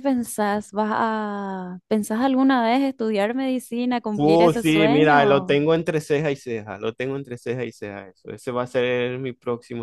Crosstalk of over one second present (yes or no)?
yes